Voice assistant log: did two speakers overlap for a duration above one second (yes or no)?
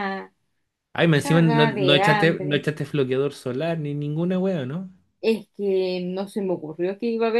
yes